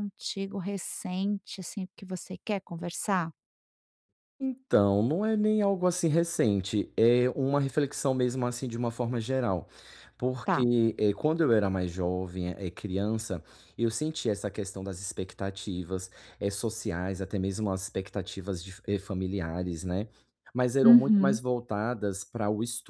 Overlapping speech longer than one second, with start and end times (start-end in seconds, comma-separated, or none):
none